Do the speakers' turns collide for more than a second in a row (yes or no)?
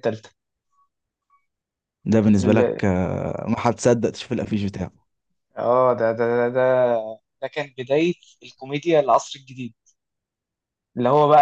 no